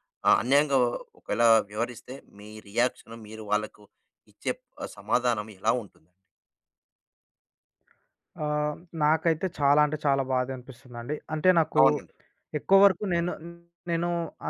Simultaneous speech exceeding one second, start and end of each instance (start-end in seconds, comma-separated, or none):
none